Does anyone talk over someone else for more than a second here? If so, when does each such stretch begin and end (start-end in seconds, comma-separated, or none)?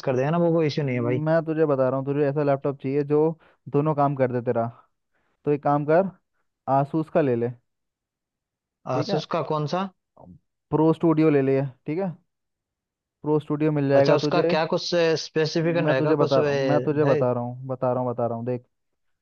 15.6-17.2